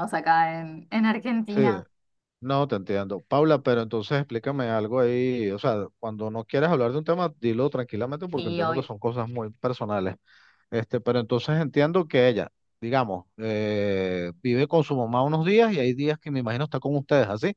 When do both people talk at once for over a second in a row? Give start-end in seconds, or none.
none